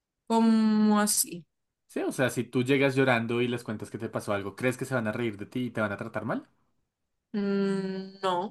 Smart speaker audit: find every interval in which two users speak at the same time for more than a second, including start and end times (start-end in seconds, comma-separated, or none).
none